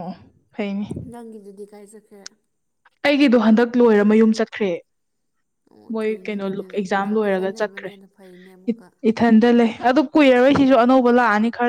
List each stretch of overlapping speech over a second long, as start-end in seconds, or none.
5.9-7.9